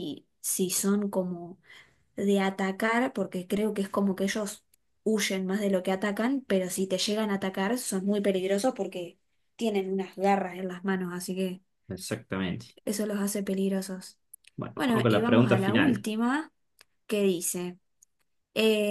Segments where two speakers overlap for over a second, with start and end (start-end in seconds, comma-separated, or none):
14.7-16.1